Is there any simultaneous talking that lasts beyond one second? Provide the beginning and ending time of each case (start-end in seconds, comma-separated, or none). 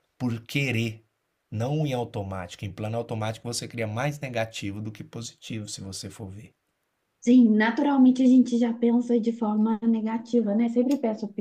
none